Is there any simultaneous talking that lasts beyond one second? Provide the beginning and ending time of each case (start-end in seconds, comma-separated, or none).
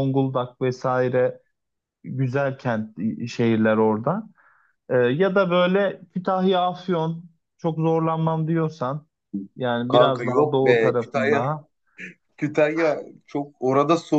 9.9-11.5